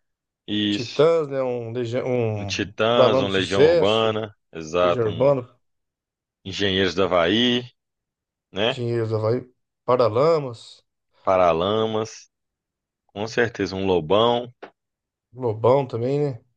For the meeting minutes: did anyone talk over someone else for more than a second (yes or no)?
yes